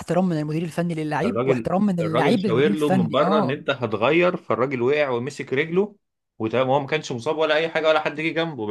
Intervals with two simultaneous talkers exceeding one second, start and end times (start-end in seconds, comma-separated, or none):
1.2-3.6